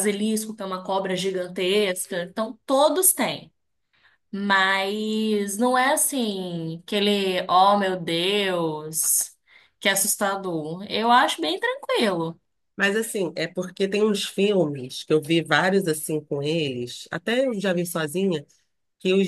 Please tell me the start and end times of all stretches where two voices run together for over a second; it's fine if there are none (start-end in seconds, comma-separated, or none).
none